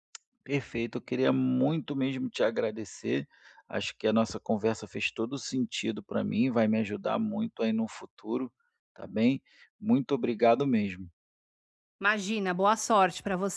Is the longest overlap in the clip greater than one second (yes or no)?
no